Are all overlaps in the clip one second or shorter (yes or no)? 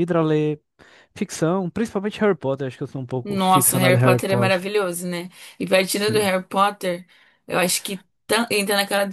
no